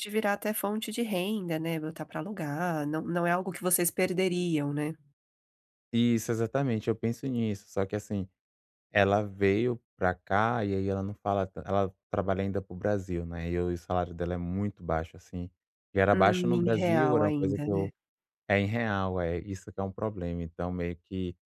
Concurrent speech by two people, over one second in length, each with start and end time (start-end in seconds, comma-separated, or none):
16.1-17.9